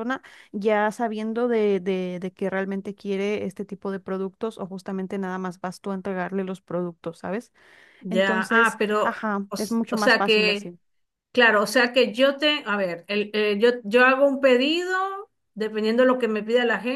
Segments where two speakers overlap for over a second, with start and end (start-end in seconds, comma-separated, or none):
8.1-10.7